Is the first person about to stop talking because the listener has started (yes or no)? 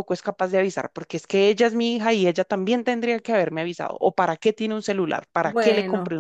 yes